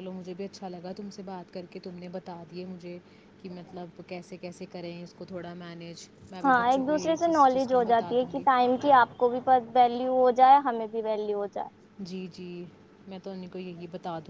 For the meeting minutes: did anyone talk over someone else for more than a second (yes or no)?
yes